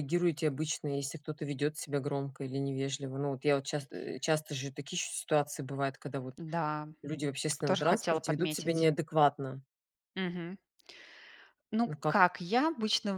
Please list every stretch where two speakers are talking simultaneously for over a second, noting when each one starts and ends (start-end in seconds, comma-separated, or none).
7.7-8.9